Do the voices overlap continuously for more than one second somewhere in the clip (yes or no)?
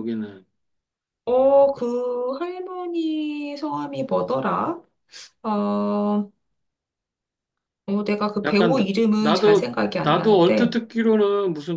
yes